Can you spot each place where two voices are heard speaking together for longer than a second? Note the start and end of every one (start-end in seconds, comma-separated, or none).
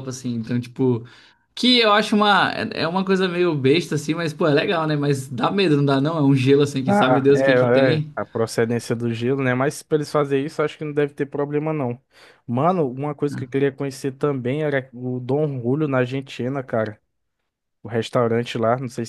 6.8-8.1